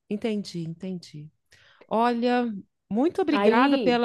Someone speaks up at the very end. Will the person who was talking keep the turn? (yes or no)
yes